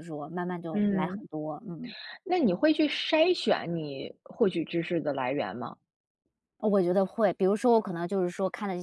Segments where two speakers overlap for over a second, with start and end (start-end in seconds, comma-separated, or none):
none